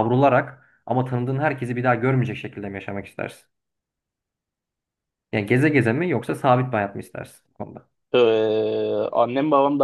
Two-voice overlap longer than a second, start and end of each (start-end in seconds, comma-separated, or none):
none